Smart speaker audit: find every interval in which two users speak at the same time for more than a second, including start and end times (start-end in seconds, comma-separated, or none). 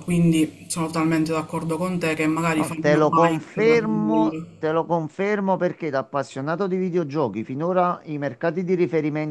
2.6-4.5